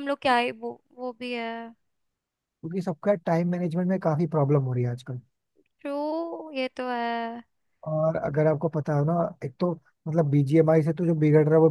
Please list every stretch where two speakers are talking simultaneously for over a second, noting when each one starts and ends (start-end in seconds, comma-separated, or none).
none